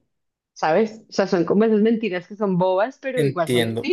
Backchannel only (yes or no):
no